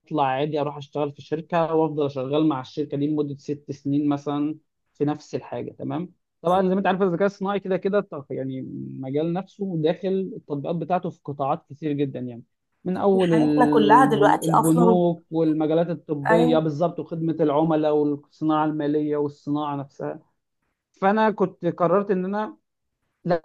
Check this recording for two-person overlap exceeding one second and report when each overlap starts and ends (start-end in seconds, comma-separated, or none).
13.3-15.0